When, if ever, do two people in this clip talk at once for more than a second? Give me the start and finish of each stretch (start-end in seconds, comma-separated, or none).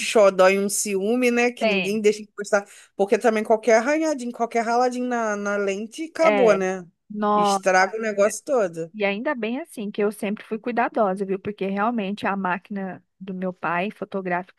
none